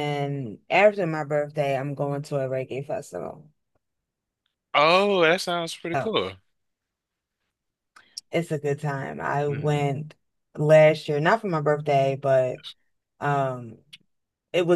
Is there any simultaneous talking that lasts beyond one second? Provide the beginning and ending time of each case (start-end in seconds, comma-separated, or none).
none